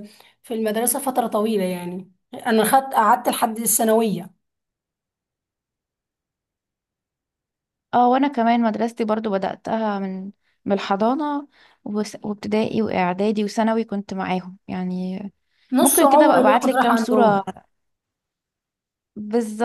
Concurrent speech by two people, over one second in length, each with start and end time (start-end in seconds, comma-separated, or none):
15.8-17.4